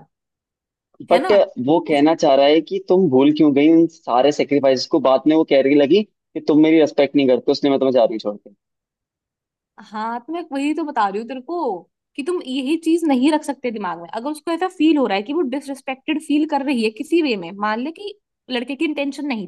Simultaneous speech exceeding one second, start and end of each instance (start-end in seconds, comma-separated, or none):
none